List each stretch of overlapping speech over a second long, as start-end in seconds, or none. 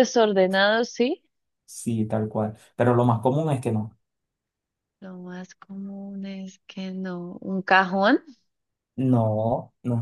none